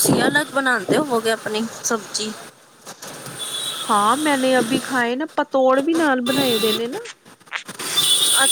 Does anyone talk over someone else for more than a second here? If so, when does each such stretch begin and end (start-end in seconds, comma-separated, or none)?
none